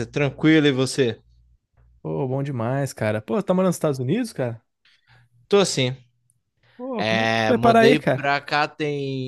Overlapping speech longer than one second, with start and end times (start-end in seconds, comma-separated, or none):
7.0-8.3